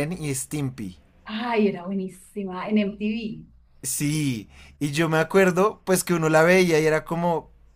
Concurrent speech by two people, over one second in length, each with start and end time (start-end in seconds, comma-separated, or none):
none